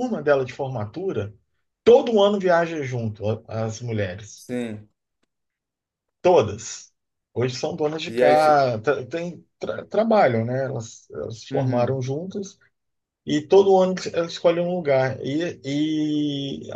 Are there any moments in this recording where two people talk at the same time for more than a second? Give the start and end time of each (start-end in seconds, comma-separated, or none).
none